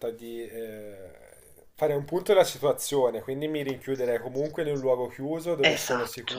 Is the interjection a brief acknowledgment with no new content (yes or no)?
yes